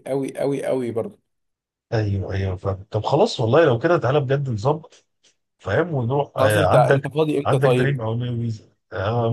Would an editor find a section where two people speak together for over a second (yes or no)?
yes